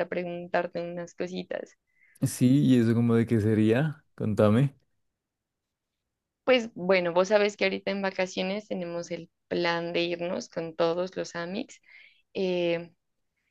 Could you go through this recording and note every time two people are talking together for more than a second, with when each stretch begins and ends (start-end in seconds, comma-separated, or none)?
none